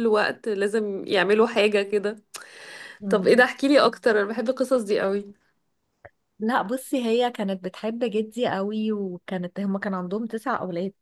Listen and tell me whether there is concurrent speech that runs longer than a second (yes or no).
no